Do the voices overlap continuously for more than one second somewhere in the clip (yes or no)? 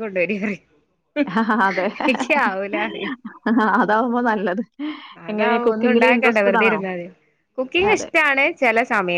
yes